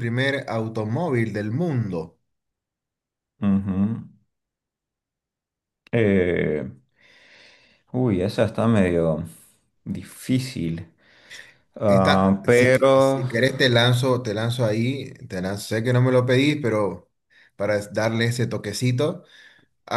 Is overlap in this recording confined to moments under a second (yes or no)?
no